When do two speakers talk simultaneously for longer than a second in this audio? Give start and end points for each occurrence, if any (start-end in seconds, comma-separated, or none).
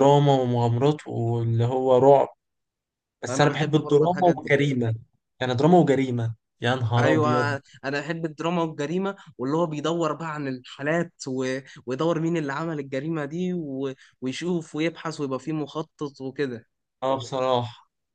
3.3-4.6